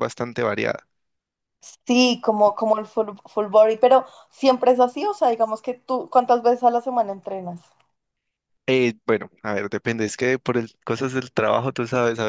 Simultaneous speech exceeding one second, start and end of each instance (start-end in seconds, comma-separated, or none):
none